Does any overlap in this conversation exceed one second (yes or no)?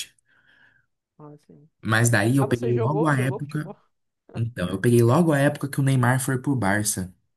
yes